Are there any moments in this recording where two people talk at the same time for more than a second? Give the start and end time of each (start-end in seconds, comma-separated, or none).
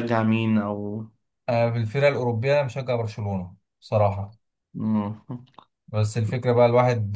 none